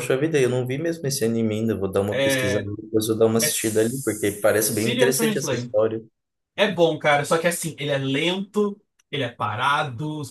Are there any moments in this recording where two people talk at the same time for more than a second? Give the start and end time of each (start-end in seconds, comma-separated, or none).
3.4-5.8